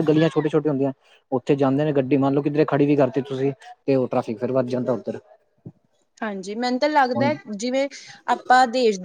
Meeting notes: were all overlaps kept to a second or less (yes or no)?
yes